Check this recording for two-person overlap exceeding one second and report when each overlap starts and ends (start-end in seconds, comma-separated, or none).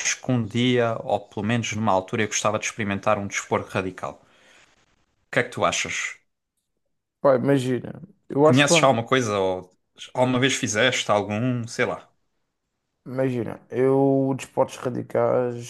none